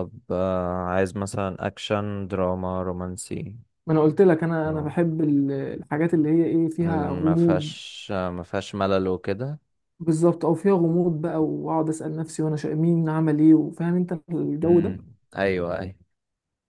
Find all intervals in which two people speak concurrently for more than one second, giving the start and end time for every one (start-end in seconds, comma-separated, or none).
none